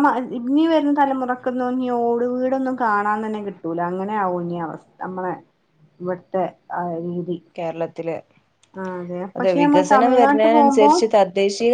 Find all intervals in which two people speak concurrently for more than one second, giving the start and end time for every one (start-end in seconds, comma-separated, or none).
9.4-10.9